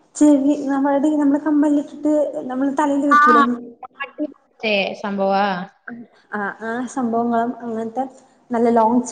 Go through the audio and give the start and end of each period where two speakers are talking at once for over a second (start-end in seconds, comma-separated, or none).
none